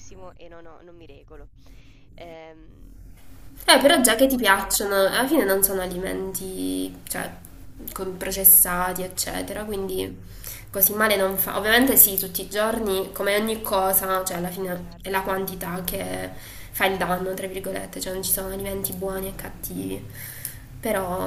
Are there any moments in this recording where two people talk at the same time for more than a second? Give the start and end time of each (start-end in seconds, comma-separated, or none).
3.7-6.1